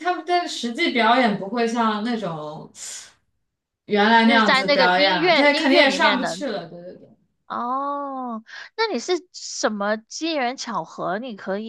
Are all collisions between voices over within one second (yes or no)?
no